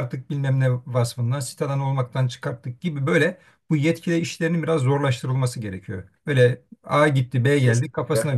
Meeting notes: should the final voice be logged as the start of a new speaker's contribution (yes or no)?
no